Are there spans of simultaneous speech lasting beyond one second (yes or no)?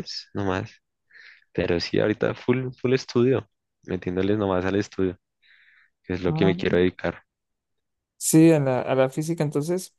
no